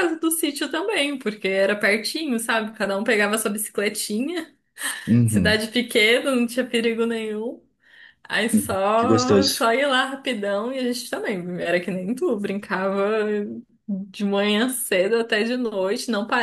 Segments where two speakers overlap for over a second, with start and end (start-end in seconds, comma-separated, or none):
8.5-9.7